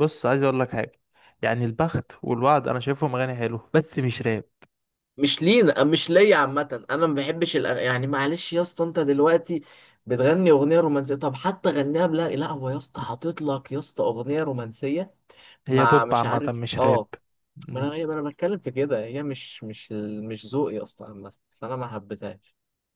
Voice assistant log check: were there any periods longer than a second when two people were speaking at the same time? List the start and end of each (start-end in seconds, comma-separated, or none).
15.7-17.1